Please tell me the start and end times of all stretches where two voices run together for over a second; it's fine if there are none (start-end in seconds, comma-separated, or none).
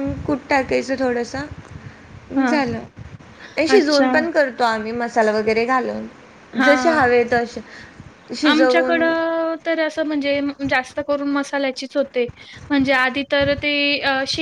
none